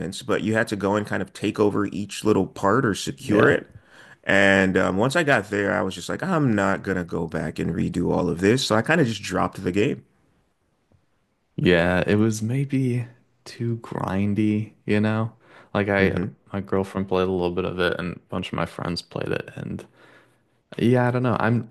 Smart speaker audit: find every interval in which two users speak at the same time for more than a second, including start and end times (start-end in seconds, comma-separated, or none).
none